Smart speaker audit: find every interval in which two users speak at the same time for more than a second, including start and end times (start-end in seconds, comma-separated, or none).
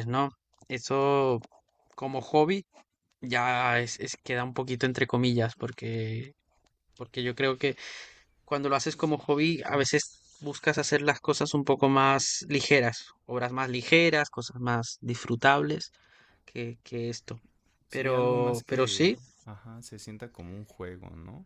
17.9-19.2